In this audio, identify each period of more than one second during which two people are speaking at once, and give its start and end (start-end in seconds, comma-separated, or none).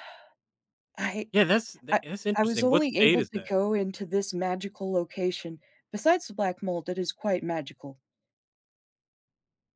1.9-3.5